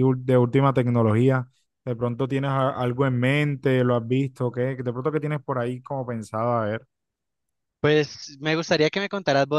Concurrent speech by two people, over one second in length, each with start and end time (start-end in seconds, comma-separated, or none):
none